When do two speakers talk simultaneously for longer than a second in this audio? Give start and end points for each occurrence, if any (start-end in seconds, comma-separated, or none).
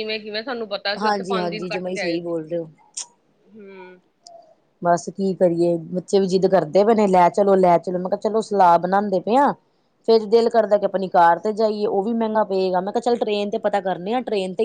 1.0-2.3